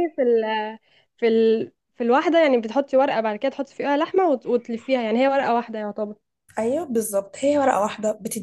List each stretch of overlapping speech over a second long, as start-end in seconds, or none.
none